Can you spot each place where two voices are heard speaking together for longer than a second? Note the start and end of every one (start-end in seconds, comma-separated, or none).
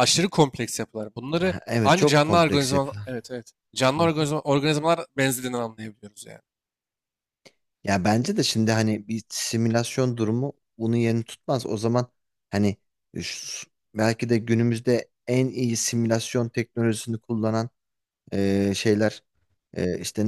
1.4-3.2